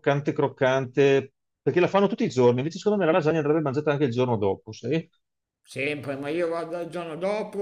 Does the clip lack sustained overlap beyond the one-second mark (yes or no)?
yes